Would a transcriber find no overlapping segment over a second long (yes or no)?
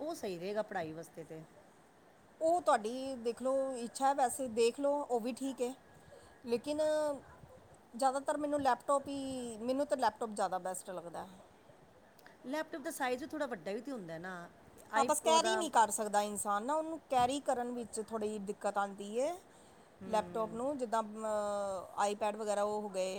yes